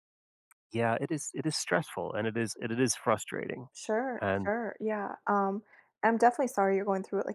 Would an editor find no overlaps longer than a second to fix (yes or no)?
yes